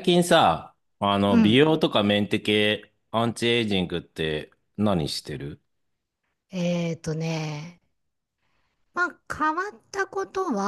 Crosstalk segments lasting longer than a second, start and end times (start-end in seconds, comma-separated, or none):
none